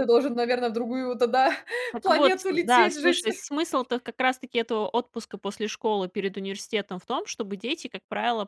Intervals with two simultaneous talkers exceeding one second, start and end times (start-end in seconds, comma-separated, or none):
2.0-3.3